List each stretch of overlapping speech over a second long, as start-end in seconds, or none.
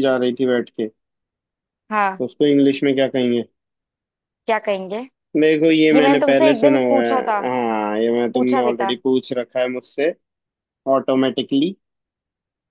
5.9-7.4